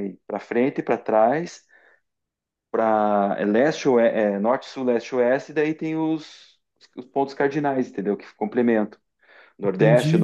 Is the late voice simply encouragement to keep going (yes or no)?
yes